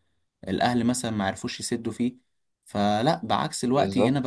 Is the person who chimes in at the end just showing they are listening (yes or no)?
yes